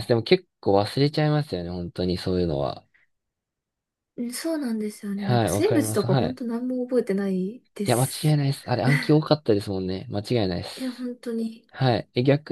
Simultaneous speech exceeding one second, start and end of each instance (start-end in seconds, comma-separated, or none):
5.2-6.4